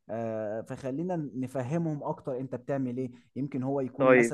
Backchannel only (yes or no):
yes